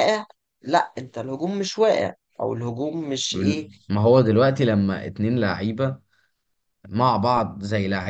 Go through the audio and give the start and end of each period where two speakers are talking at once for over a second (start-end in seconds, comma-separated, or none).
none